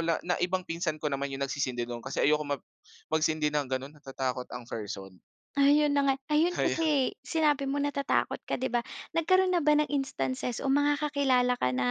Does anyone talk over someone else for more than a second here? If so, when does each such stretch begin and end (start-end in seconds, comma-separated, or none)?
none